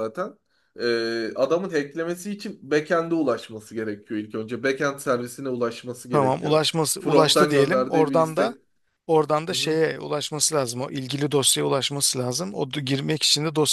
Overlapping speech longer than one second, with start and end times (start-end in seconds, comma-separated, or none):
6.1-8.5